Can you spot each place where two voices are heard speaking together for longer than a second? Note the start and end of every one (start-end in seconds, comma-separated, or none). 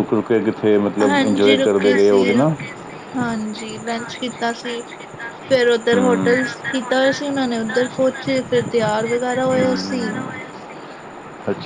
1.1-2.5